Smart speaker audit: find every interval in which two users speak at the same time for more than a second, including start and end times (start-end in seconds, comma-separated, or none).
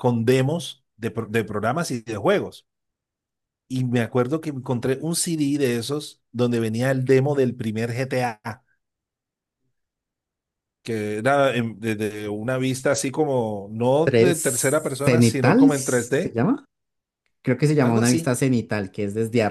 15.0-16.4